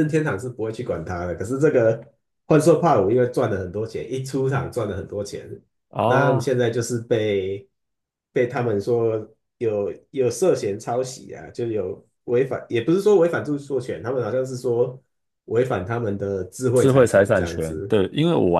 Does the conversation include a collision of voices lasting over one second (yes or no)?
yes